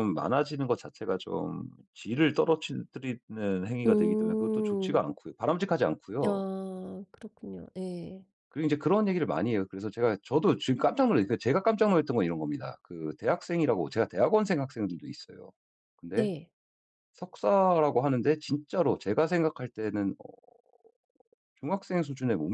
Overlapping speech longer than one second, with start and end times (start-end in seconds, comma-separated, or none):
3.9-5.1